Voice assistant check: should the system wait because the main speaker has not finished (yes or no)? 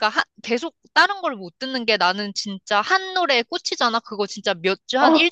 yes